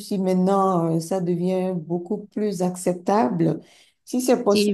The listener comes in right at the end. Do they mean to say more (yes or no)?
no